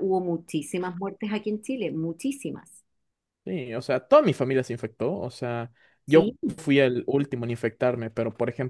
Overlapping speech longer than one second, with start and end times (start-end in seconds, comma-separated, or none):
none